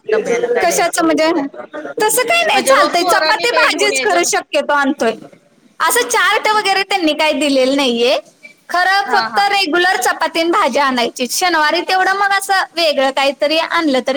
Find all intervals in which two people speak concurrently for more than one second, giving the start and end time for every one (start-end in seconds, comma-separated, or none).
2.5-4.2